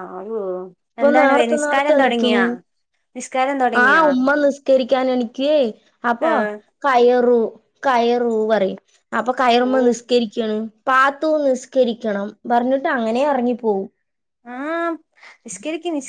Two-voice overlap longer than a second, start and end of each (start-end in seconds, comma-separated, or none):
1.0-2.4